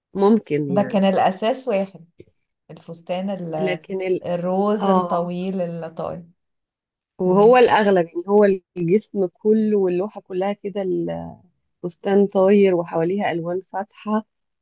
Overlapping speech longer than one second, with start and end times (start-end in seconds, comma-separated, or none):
none